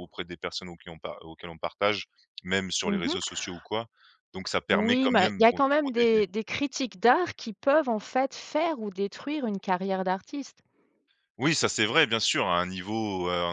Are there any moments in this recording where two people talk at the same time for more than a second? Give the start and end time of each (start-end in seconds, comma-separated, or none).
4.7-6.2